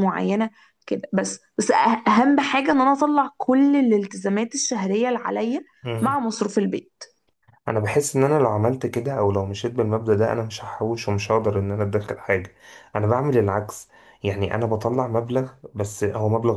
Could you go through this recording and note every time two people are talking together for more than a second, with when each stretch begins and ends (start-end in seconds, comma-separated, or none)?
none